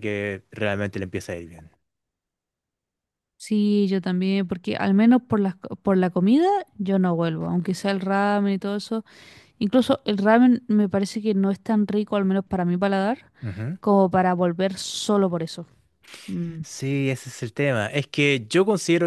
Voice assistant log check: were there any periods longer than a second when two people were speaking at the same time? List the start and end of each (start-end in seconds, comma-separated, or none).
none